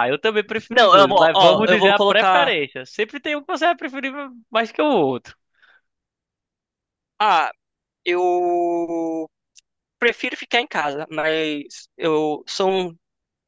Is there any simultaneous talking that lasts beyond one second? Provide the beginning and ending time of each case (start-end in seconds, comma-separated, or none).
0.7-2.5